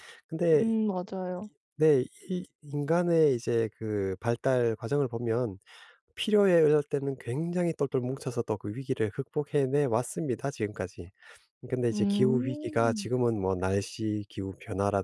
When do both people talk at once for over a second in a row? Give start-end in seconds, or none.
11.9-13.1